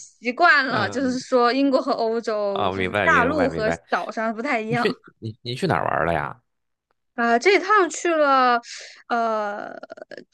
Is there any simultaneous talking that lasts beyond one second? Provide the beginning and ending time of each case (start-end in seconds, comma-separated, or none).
2.5-3.8